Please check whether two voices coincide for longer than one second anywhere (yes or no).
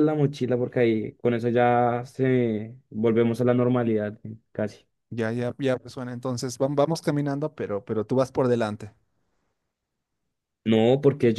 no